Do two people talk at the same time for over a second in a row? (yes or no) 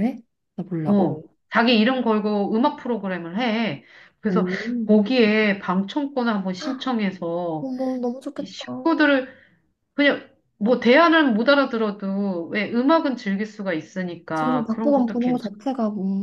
yes